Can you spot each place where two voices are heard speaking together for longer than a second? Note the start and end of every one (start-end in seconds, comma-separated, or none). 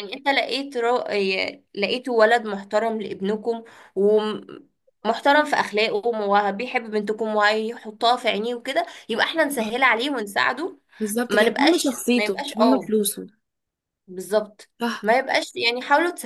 11.3-12.9